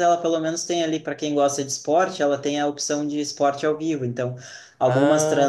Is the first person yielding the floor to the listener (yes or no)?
no